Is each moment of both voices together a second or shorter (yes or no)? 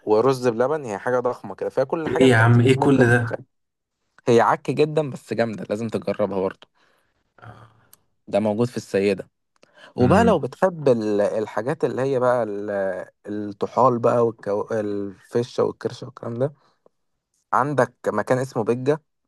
no